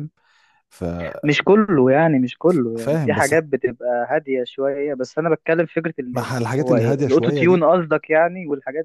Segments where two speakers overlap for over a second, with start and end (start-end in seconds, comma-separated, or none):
6.1-7.7